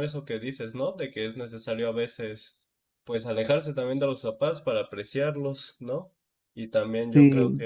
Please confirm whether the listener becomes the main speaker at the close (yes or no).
no